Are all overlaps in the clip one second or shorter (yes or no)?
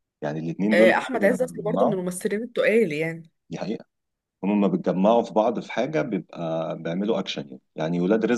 no